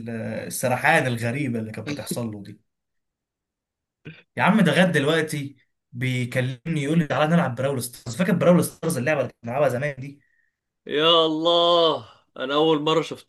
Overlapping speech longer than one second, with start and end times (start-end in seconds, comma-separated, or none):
none